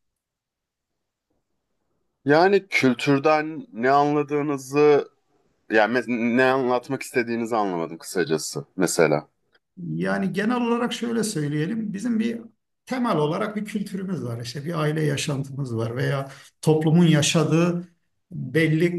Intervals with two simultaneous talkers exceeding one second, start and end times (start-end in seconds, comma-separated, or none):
none